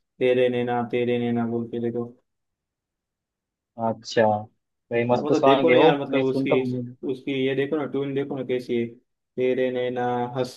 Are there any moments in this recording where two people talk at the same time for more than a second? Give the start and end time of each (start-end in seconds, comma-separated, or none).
5.1-6.6